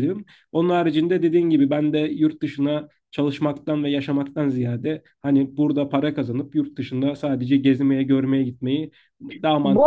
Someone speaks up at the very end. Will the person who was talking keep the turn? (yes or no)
no